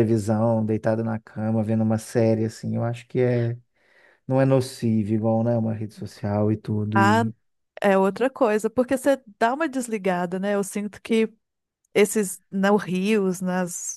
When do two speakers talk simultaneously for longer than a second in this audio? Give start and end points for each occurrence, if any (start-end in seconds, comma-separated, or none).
none